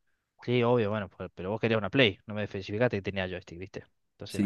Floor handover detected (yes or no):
yes